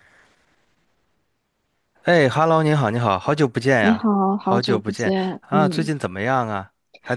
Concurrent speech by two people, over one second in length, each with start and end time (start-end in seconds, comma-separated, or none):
3.8-5.9